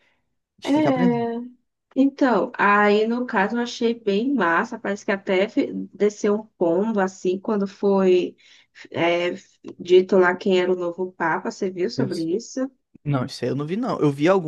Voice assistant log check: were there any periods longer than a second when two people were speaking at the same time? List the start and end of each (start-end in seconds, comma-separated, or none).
none